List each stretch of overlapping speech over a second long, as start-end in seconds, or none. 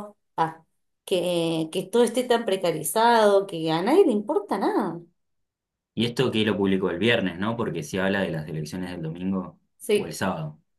none